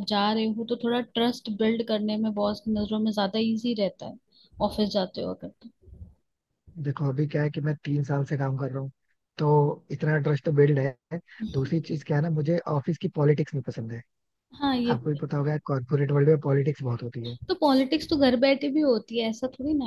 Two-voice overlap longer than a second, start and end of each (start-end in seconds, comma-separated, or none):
none